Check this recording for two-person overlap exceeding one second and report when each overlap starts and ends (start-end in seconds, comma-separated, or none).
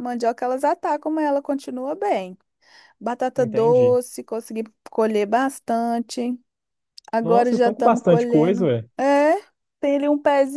7.2-8.9